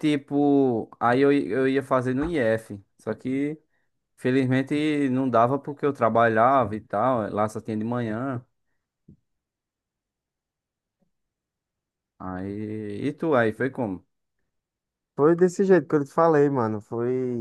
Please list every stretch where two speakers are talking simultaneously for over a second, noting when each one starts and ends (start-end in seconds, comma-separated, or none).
none